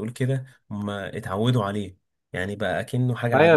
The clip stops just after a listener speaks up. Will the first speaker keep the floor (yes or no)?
no